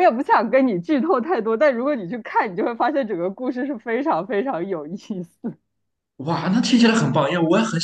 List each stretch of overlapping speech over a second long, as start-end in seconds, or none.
none